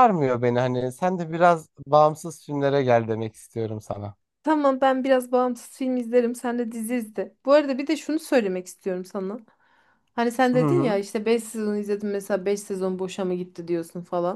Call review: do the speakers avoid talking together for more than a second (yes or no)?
yes